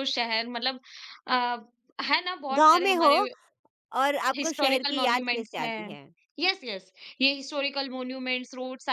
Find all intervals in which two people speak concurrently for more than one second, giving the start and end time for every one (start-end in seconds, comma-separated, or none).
4.4-5.9